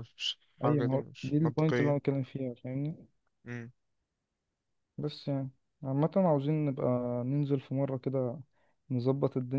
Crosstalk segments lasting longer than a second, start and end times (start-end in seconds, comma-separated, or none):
0.6-2.0